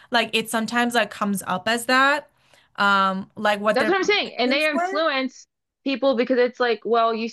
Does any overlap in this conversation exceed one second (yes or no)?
yes